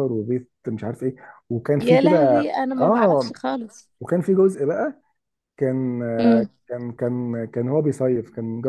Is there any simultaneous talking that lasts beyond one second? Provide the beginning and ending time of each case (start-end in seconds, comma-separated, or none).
1.8-3.3